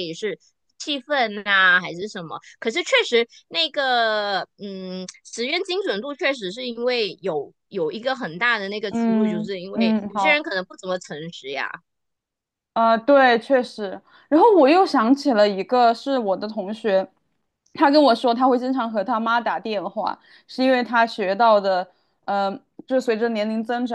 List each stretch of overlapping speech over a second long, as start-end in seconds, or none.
8.9-10.4